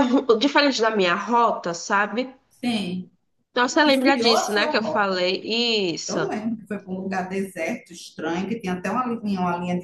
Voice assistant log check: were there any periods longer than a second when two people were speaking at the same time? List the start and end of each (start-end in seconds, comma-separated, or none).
3.6-5.2